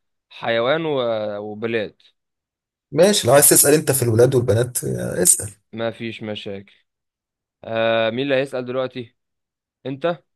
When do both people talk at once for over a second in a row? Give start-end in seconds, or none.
none